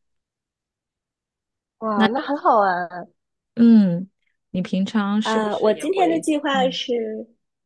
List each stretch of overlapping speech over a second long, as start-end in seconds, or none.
5.2-6.8